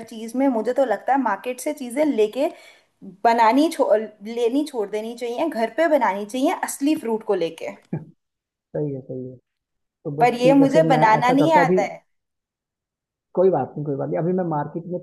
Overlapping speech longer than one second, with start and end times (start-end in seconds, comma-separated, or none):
10.2-11.8